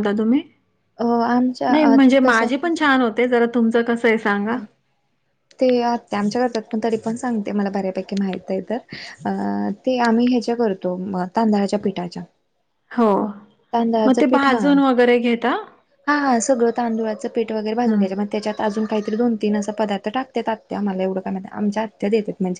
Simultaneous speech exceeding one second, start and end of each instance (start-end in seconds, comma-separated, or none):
none